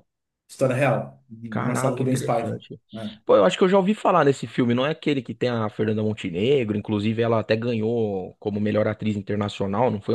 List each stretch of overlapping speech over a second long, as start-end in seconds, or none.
1.5-2.8